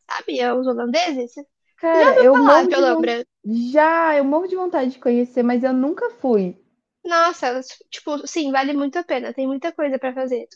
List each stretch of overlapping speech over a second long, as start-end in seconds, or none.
1.8-3.2